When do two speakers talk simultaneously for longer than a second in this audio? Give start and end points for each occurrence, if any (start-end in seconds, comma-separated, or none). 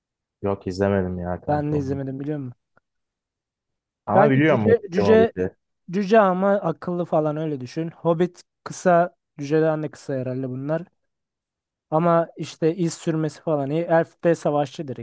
4.1-5.3